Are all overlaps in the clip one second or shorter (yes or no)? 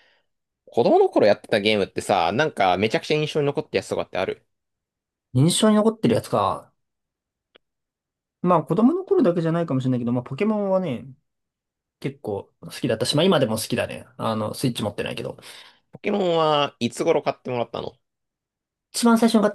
yes